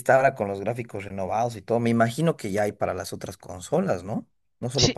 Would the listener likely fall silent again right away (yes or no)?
no